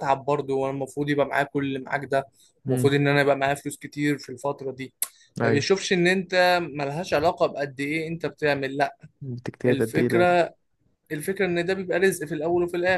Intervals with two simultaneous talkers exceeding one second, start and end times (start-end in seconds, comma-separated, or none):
none